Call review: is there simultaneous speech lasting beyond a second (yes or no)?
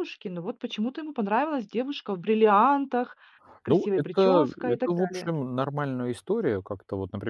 yes